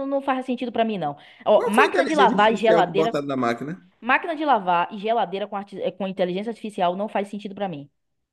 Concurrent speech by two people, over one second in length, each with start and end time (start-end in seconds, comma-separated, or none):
1.6-3.1